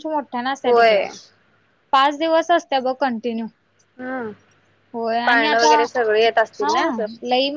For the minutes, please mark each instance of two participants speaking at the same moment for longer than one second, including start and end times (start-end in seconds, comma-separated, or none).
5.3-6.8